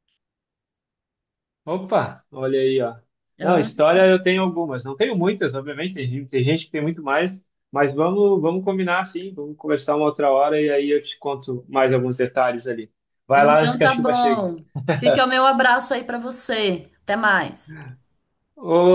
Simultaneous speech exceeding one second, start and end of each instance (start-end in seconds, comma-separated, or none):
13.3-14.5